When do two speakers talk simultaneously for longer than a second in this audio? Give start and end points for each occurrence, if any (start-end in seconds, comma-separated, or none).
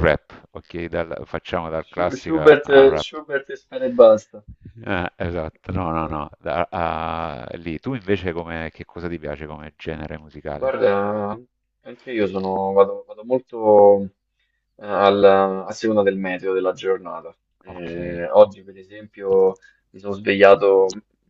1.8-3.2